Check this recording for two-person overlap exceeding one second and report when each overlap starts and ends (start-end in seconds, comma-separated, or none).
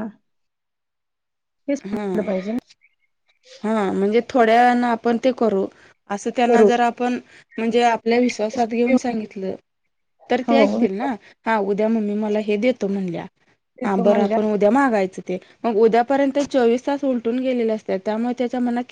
none